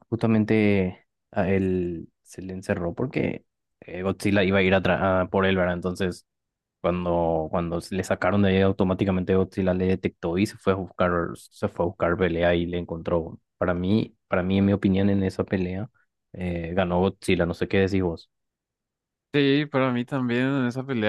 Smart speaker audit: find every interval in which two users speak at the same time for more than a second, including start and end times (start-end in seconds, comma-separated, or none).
none